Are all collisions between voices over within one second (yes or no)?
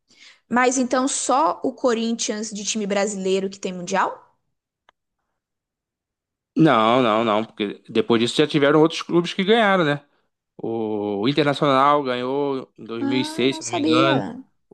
no